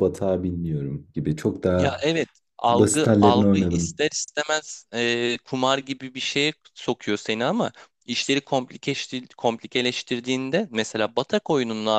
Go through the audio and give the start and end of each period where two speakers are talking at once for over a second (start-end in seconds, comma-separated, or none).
2.7-4.0